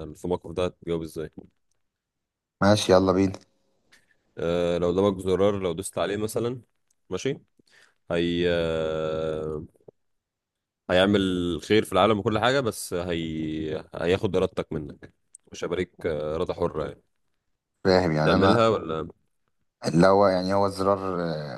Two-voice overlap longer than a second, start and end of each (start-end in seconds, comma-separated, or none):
none